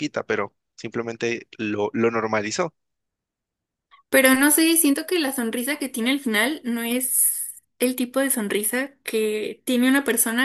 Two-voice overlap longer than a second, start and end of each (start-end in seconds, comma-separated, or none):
none